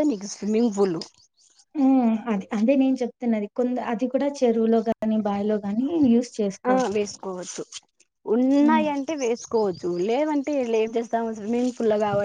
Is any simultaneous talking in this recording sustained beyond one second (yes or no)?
no